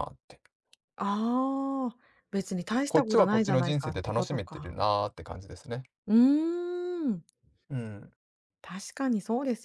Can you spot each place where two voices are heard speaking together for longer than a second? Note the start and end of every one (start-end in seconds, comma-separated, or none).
2.9-4.7